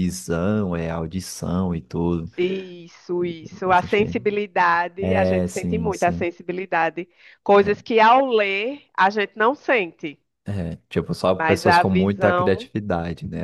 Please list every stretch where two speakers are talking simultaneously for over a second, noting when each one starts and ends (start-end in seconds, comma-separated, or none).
5.0-6.3, 11.4-12.7